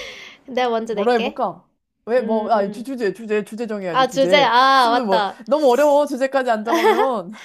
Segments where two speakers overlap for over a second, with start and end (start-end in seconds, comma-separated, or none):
3.9-5.4